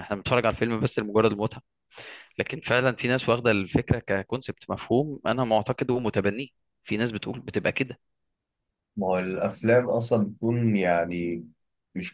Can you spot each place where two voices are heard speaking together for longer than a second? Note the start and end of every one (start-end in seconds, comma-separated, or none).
none